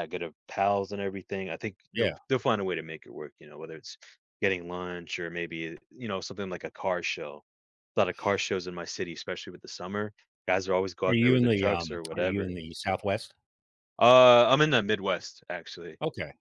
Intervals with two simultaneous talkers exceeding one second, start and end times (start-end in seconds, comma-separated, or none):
11.1-12.5